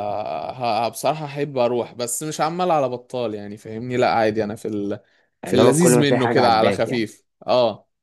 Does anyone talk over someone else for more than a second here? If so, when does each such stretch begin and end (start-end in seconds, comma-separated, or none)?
5.5-7.1